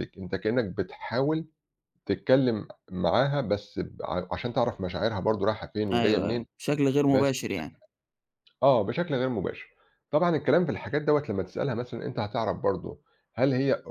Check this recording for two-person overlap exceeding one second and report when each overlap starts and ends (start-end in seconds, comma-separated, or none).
none